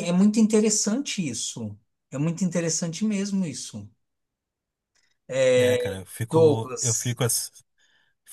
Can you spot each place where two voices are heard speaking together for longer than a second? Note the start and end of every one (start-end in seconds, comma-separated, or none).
5.6-7.2